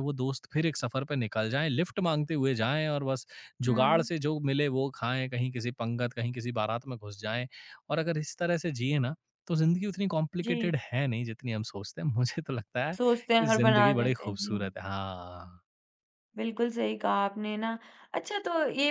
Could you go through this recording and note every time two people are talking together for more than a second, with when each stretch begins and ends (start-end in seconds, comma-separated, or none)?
13.4-14.7